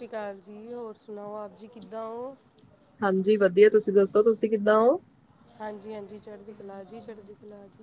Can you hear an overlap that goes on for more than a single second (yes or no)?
no